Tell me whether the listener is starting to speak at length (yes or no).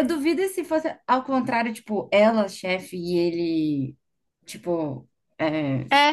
yes